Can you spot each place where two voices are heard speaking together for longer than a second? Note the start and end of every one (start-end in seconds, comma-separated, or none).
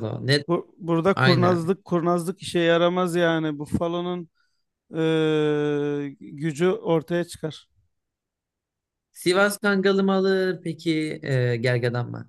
none